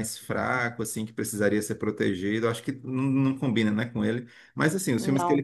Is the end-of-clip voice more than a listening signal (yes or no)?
no